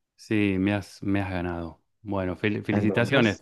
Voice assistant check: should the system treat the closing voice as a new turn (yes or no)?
no